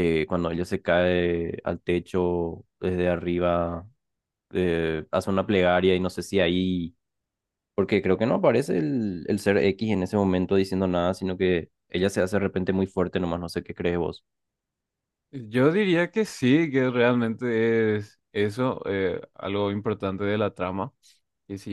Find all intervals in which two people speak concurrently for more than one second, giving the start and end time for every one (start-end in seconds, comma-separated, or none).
none